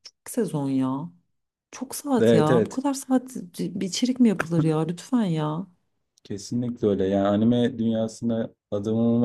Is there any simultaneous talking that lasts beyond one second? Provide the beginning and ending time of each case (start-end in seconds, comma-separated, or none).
none